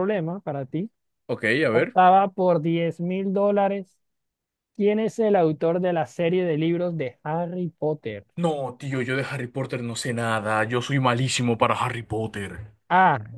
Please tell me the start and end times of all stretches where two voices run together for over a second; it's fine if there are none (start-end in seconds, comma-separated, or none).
none